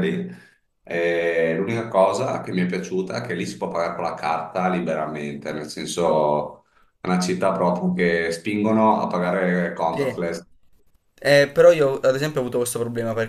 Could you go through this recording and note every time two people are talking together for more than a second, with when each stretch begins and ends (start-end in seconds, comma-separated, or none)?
none